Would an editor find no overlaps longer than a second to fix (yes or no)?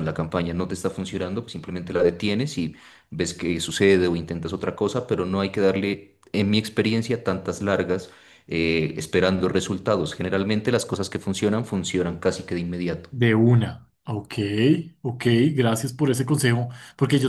yes